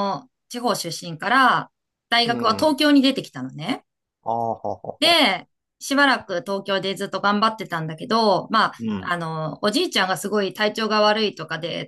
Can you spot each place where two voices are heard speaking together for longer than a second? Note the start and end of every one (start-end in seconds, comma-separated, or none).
none